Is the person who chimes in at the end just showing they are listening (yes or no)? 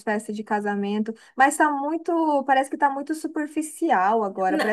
yes